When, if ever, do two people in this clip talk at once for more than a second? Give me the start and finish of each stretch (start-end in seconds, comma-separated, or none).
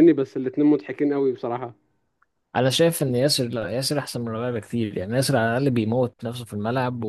none